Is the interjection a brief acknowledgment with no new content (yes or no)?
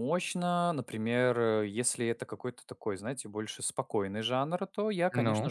yes